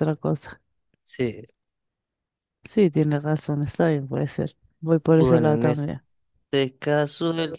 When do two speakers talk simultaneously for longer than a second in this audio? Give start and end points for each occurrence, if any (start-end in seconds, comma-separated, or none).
none